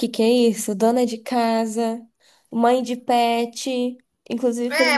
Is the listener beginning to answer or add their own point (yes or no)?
yes